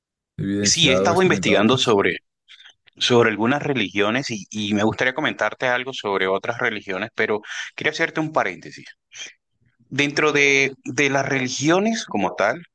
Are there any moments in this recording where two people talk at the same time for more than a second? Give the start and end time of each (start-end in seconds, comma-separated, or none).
0.6-2.0